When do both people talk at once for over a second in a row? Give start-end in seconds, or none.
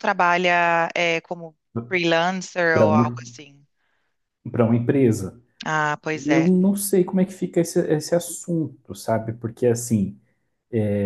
none